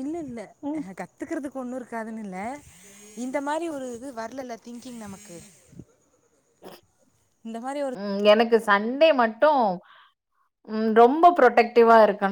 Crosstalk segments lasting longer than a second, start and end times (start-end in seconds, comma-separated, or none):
none